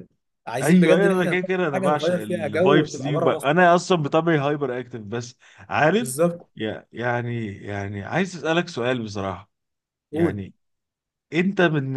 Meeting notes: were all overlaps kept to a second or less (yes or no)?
no